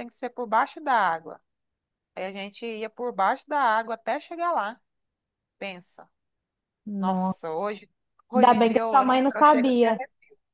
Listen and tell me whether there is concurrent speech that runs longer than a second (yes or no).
yes